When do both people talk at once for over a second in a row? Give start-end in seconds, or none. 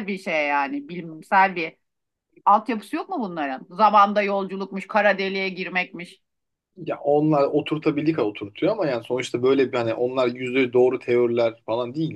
none